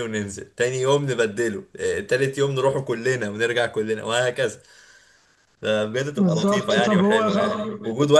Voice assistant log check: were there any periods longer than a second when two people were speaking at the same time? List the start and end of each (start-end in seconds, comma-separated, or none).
6.2-7.7